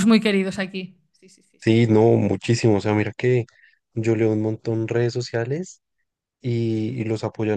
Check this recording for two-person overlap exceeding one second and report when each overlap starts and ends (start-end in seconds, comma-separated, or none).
none